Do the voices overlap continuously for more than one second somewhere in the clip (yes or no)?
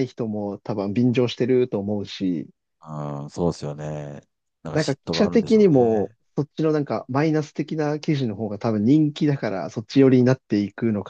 yes